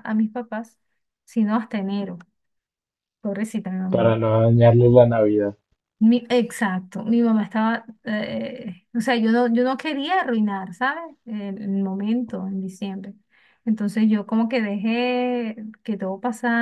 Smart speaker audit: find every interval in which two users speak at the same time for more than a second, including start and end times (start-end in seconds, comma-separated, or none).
none